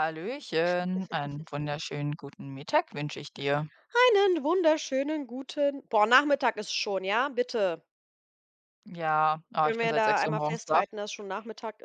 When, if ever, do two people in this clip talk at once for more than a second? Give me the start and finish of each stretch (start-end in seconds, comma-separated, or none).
9.6-10.8